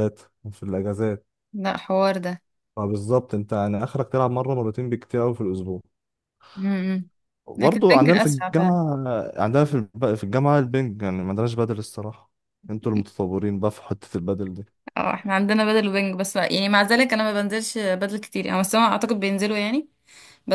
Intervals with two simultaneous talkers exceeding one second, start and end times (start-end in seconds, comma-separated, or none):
7.5-8.8